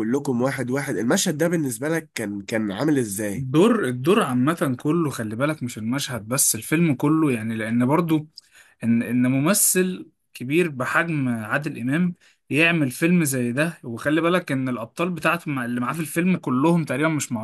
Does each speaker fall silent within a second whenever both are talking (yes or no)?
yes